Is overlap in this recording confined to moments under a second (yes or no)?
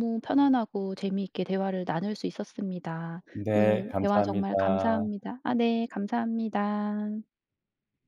no